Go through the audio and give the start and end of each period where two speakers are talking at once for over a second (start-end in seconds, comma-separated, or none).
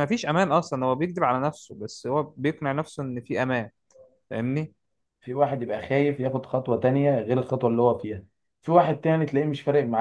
none